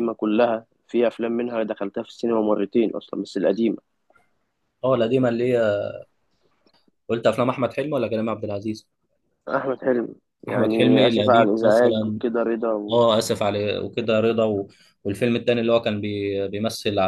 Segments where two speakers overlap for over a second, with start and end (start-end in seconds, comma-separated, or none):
10.5-12.2